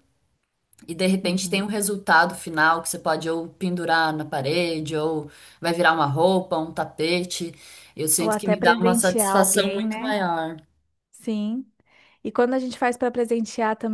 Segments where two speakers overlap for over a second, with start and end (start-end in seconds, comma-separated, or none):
8.2-10.2